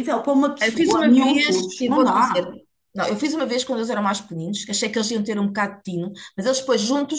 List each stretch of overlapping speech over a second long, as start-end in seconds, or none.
0.6-2.5